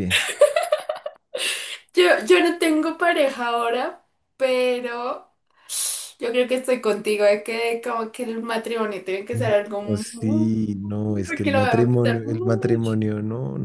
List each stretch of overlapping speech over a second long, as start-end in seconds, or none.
9.3-10.5, 11.3-12.9